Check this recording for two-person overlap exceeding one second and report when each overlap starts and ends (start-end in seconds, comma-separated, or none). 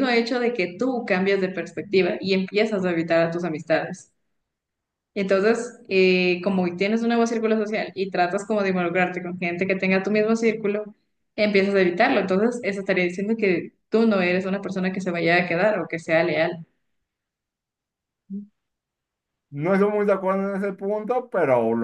none